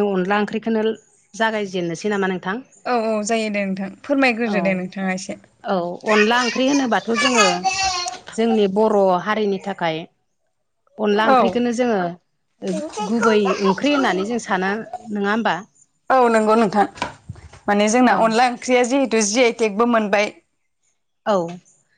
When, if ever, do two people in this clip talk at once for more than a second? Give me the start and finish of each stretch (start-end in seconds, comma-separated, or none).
12.7-14.7